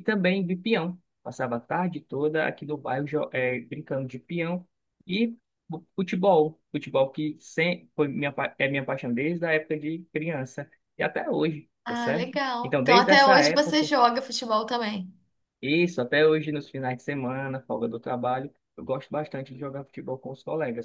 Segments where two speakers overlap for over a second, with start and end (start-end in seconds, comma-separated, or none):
11.8-13.9